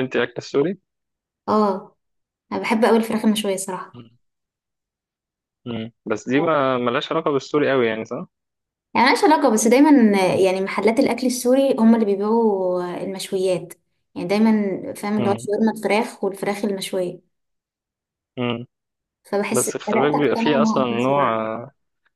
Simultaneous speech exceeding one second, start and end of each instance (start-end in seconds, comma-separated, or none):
19.5-21.2